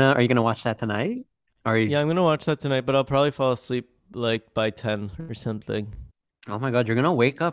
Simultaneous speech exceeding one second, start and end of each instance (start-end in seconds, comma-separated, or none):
none